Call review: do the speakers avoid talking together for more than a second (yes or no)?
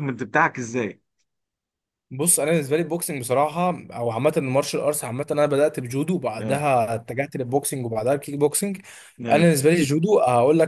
yes